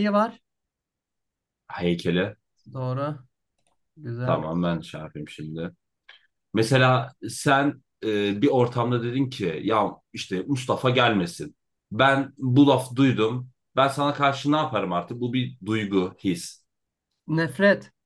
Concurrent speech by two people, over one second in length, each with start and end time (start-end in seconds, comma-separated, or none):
none